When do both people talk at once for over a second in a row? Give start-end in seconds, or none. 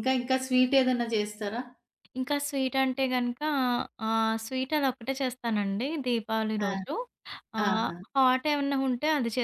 none